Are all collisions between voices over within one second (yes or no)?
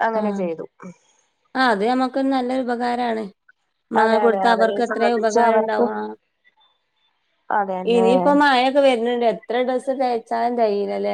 no